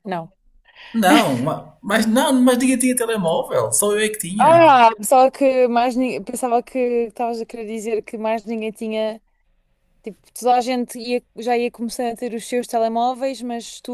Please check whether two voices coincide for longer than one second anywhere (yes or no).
no